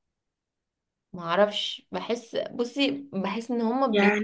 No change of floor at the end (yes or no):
no